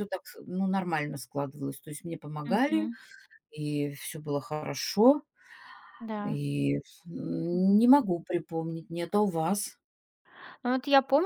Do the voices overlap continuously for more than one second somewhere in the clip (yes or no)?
no